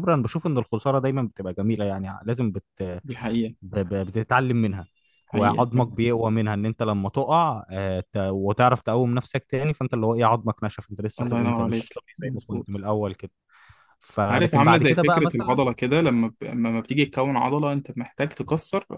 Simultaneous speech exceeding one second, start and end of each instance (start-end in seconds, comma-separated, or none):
11.2-12.8, 14.3-15.6